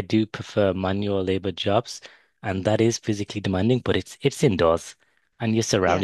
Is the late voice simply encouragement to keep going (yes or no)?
yes